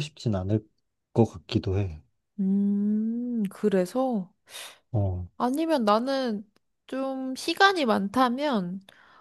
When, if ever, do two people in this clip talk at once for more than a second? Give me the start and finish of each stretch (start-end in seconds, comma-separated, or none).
none